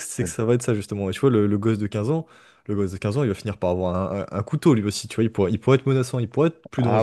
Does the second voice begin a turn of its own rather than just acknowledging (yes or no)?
no